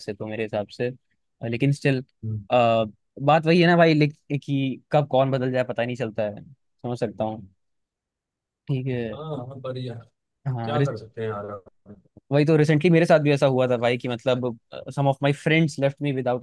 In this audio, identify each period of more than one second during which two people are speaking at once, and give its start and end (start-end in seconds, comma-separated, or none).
none